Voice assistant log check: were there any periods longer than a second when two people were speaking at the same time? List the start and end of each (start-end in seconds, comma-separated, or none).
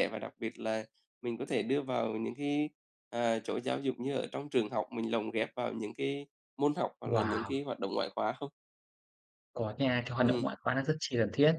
none